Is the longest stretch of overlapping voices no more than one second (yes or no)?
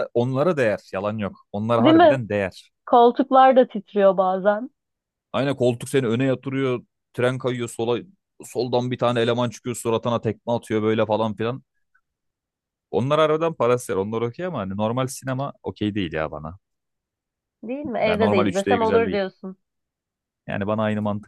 no